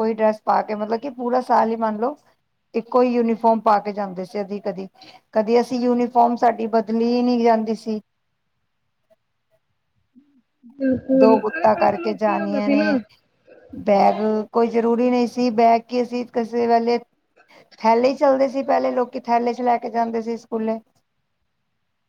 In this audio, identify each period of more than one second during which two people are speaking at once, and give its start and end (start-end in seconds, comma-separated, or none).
11.2-12.8